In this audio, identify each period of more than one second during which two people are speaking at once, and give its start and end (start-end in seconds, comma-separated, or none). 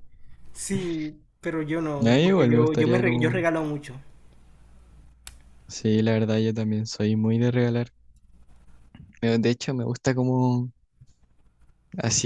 2.0-3.5